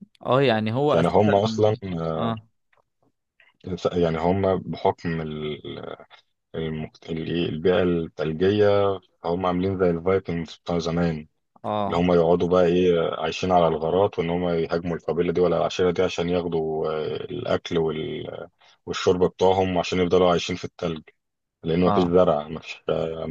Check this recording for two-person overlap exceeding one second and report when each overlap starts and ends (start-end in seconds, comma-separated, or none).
none